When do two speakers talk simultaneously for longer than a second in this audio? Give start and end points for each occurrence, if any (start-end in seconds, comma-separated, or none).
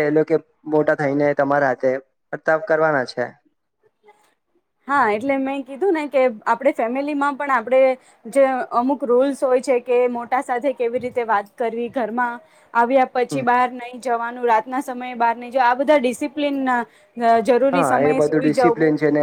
none